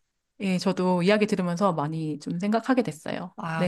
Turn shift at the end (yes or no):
yes